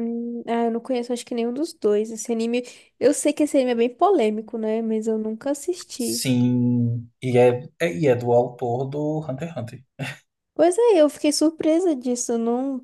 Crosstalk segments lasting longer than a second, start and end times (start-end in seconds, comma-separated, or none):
none